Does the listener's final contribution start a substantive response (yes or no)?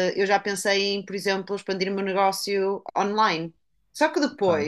no